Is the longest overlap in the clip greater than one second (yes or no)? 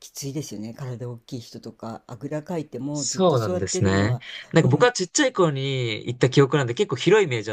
yes